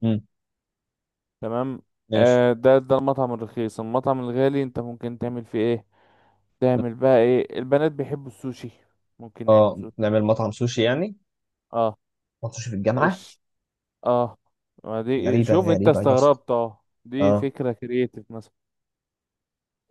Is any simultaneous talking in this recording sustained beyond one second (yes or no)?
yes